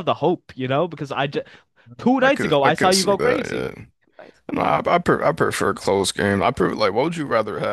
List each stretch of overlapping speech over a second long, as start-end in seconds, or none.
2.2-3.9